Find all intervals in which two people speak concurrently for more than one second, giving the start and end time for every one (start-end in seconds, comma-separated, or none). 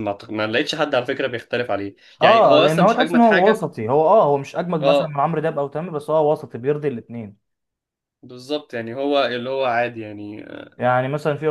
2.2-3.7